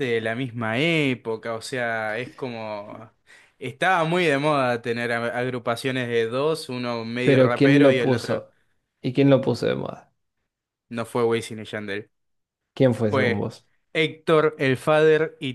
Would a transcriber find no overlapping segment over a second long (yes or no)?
no